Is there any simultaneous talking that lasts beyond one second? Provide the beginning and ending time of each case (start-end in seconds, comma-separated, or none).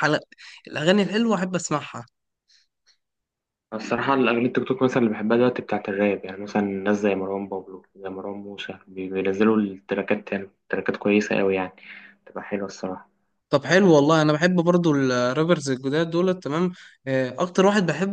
none